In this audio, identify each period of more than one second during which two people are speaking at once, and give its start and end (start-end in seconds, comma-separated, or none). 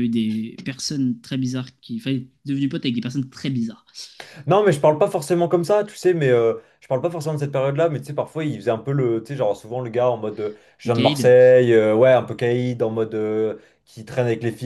none